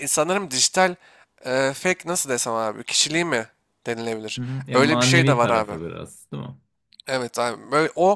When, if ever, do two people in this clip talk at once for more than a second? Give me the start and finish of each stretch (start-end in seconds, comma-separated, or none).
4.4-5.7